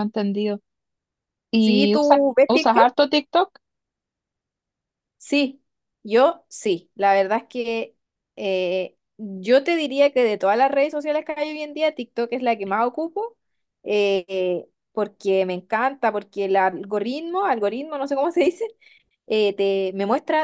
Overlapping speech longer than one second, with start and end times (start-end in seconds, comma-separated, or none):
1.6-2.9